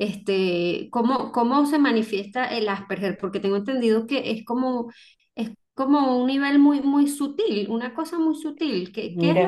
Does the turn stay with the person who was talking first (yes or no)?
yes